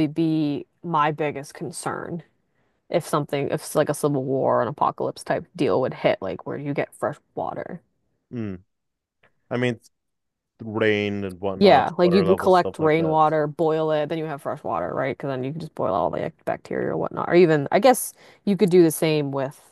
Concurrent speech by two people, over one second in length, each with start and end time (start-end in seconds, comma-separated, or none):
11.6-13.2